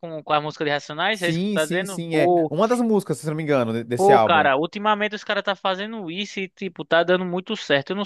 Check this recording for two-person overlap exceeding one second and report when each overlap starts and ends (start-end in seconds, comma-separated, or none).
1.1-2.5